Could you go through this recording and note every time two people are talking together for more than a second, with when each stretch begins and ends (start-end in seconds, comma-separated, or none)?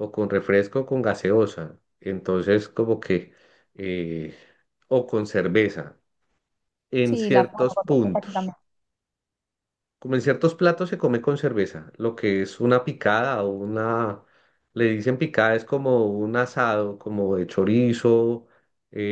7.0-8.5